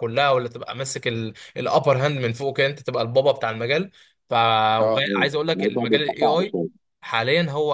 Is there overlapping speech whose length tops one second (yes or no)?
yes